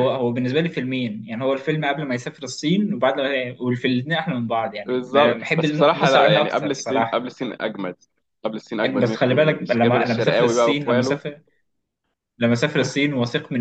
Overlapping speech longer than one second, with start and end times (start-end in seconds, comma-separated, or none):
4.9-7.3, 9.0-11.2